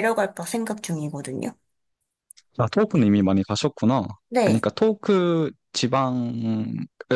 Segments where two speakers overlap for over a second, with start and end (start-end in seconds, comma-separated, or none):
none